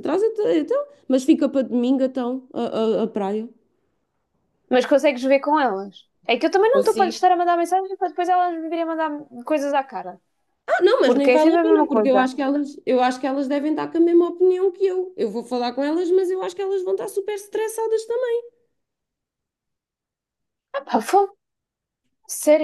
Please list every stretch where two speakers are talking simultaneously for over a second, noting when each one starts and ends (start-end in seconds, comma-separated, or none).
11.0-12.3